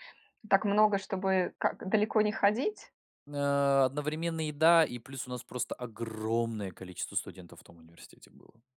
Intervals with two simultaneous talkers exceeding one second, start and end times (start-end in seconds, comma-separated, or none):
none